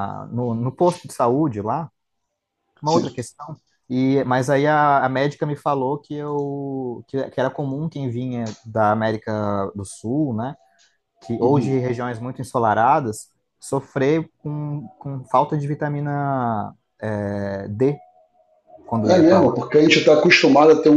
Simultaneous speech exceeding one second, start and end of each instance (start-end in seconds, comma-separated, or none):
none